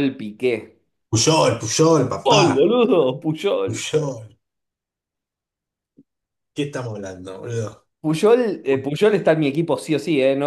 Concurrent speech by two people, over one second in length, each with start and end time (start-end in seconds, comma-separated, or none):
none